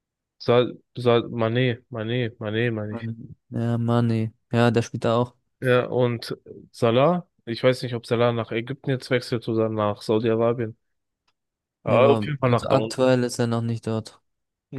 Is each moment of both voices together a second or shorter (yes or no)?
no